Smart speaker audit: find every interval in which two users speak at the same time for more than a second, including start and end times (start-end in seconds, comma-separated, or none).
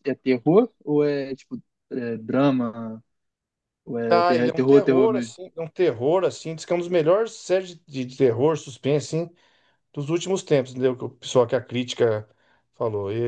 4.1-5.3